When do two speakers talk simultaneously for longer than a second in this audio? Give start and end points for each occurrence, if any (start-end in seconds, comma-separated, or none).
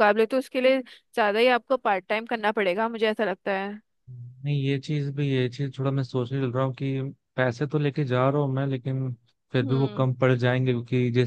none